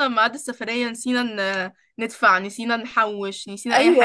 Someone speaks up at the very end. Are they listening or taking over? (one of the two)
taking over